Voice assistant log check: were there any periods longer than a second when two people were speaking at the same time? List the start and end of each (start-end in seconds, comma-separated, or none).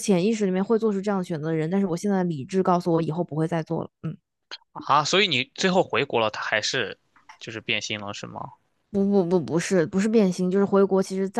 none